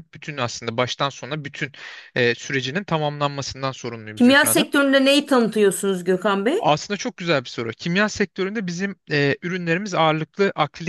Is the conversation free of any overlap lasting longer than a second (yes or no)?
yes